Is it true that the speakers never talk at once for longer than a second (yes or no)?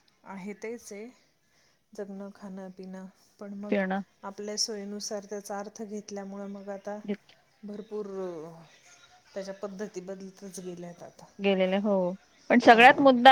yes